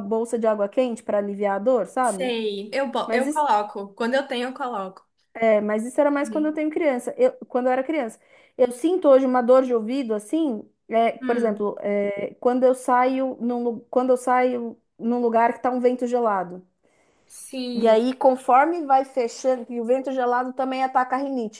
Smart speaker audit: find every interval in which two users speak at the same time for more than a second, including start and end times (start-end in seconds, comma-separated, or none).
none